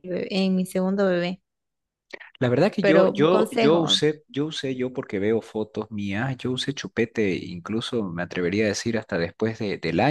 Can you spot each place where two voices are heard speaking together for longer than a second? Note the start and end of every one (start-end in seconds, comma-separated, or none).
2.8-4.0